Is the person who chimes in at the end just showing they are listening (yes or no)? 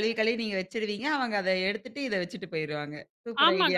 no